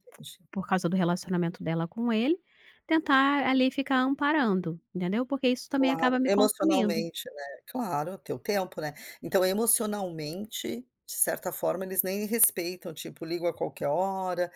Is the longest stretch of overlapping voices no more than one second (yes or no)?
no